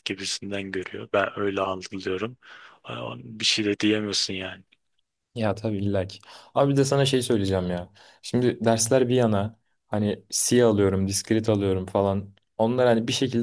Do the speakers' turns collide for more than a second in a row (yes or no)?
no